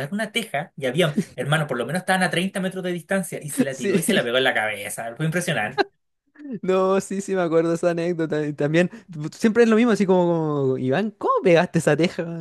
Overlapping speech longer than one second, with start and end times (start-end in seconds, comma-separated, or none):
none